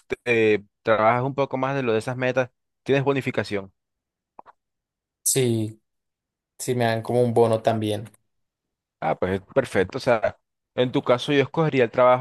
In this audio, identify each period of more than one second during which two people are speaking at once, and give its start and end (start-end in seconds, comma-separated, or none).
none